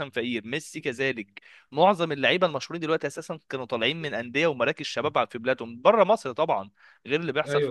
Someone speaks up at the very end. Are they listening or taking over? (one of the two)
listening